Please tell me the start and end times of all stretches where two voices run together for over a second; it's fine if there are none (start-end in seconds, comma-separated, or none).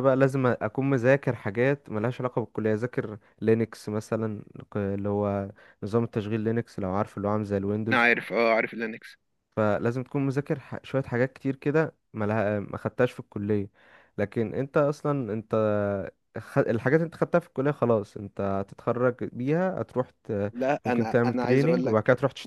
20.5-22.0